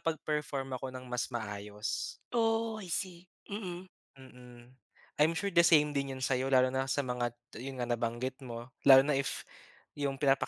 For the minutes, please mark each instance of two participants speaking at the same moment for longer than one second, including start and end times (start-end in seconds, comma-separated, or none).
none